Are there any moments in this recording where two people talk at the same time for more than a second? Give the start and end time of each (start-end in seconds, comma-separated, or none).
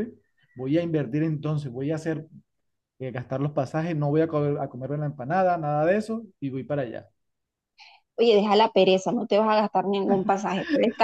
none